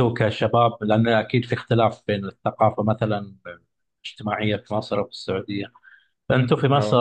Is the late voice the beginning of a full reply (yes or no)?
no